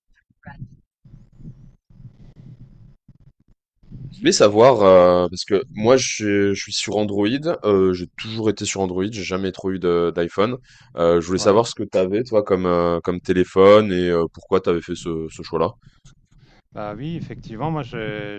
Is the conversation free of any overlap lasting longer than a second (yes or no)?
yes